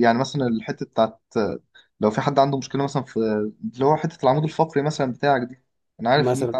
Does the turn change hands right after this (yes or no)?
no